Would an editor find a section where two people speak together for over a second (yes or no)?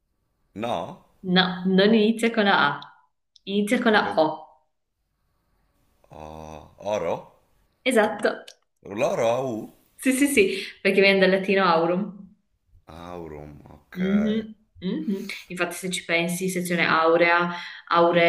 no